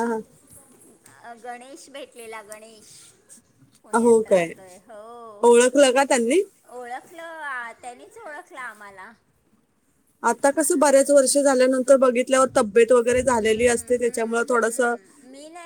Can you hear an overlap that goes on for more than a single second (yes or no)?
yes